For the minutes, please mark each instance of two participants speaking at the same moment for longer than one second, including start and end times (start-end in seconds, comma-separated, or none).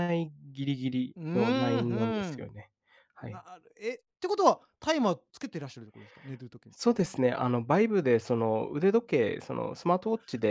1.1-2.5